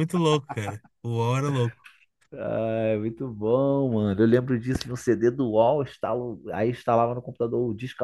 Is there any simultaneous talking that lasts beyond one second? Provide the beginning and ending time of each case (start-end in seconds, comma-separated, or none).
none